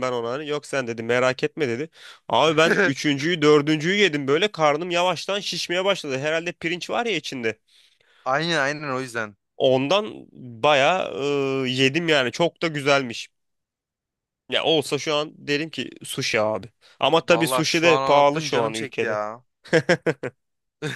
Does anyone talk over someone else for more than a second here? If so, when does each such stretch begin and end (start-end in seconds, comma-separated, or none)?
17.3-19.2